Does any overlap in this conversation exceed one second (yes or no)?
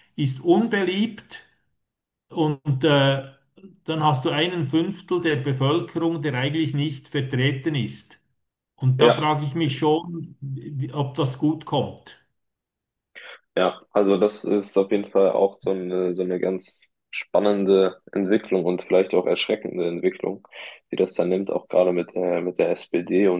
no